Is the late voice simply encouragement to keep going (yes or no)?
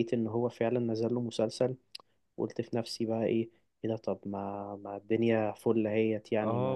no